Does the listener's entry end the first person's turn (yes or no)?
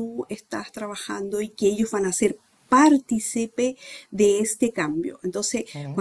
no